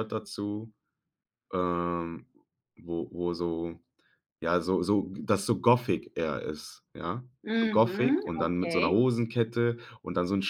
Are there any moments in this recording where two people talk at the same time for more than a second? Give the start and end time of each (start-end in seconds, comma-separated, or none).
7.4-9.0